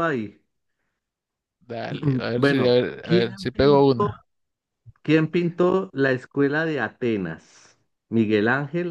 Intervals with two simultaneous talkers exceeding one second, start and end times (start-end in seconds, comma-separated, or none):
2.4-4.1